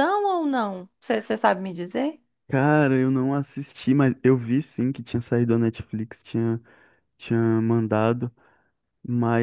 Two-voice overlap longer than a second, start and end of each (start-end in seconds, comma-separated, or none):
none